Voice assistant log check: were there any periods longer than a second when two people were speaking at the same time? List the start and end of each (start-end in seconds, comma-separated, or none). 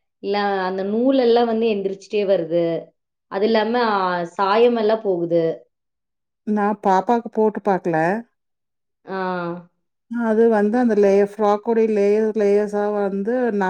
none